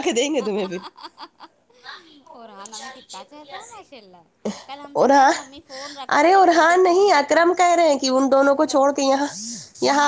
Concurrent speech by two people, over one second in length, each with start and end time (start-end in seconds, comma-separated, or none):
6.2-7.5